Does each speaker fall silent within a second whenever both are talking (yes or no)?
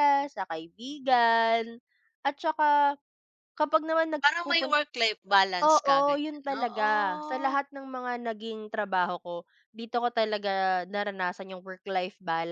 no